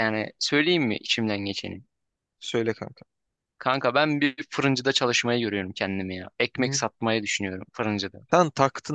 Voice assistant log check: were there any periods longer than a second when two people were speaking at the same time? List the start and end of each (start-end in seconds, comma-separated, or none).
none